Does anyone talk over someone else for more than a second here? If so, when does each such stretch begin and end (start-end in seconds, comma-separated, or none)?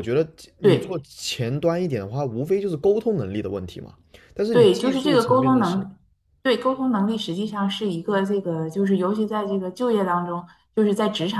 4.5-5.9